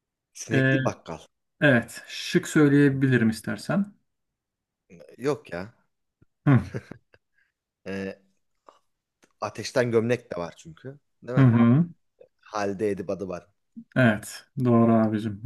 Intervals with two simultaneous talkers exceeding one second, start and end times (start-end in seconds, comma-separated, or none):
none